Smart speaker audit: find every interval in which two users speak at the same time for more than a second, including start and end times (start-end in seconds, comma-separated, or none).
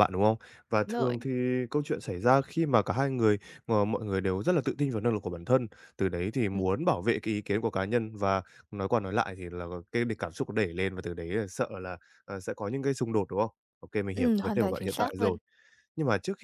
14.1-15.4